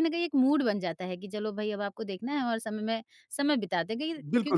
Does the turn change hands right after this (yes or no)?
yes